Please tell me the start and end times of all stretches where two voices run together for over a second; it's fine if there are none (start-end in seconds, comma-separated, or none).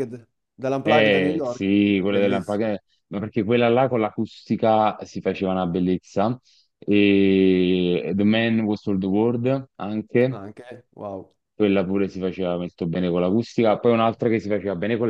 0.9-2.6